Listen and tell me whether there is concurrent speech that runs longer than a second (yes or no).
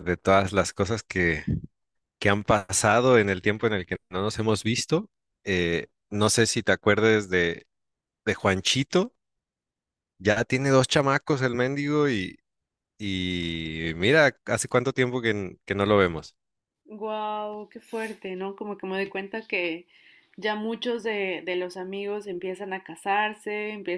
no